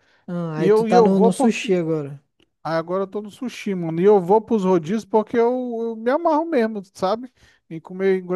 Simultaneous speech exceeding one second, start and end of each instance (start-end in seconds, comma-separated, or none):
0.6-1.8